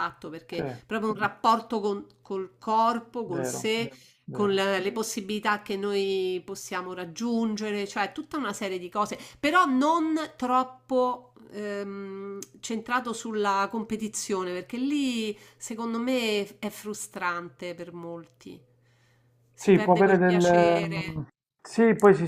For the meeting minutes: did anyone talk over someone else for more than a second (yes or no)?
yes